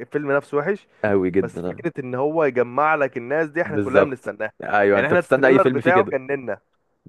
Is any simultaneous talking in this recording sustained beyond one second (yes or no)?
yes